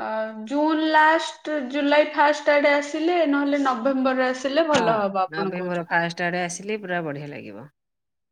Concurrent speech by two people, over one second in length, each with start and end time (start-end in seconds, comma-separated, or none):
none